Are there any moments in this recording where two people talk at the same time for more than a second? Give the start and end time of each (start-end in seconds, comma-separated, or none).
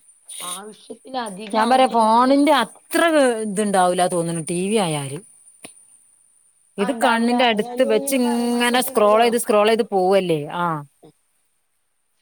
6.8-9.2